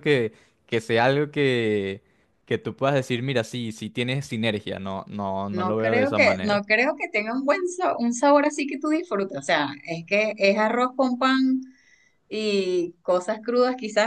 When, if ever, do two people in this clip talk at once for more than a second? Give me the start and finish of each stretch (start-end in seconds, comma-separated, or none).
5.5-6.8